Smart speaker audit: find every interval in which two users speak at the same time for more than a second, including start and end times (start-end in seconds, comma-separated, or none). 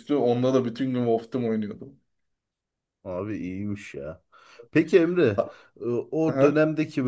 none